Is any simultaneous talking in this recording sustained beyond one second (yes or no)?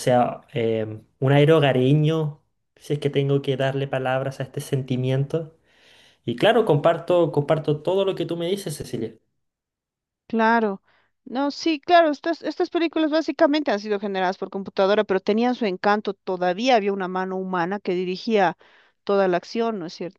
no